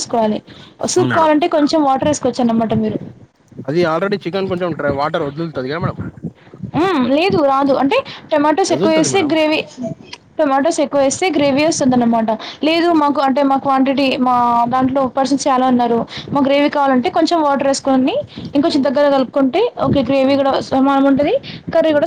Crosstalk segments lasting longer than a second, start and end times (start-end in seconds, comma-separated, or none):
none